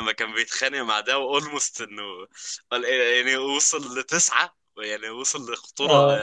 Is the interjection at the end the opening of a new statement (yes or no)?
no